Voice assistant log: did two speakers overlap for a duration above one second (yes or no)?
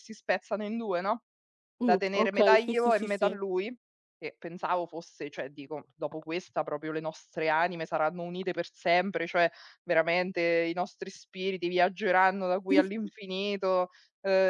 yes